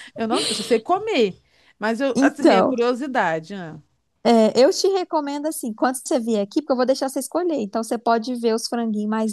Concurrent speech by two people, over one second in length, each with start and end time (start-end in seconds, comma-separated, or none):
none